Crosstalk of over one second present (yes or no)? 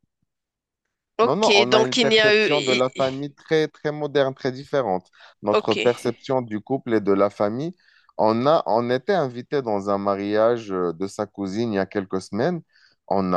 yes